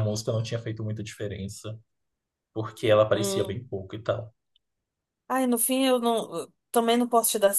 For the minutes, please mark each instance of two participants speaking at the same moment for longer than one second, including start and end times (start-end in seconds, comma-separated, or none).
none